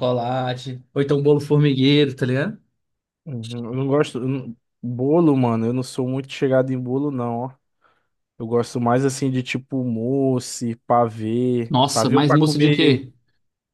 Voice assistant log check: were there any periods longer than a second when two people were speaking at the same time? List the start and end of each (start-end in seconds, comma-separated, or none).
11.7-13.1